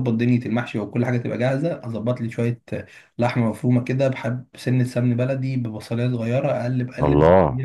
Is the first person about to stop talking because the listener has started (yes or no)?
no